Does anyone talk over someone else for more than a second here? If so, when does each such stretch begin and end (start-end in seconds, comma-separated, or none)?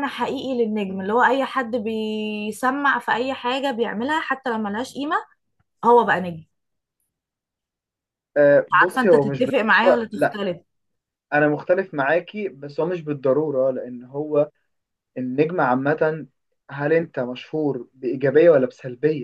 8.7-10.4